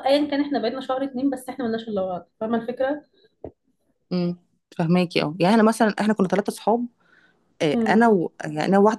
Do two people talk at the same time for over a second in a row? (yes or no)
no